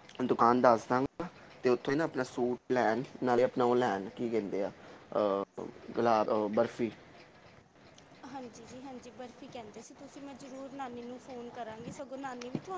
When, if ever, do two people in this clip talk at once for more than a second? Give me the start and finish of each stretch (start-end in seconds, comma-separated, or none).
none